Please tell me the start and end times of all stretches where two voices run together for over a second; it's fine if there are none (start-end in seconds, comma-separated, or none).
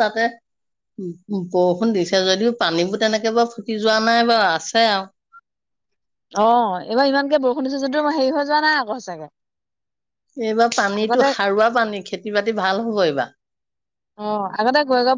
none